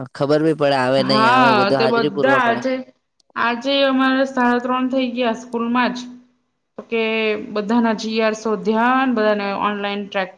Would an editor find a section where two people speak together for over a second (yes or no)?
yes